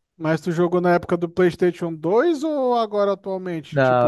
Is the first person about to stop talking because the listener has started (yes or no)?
yes